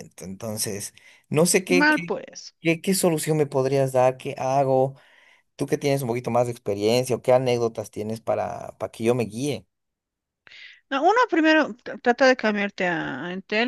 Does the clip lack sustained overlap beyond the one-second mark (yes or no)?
yes